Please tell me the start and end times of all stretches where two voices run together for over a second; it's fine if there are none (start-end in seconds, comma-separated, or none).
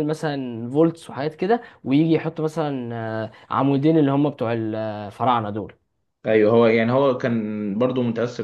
none